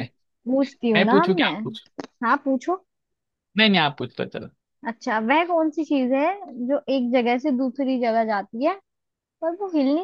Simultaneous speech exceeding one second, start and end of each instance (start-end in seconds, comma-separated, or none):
none